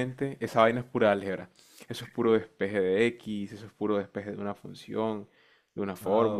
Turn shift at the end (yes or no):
no